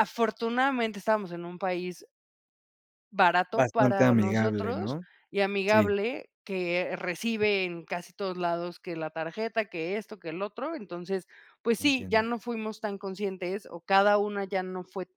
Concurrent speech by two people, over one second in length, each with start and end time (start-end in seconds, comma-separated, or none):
3.5-5.0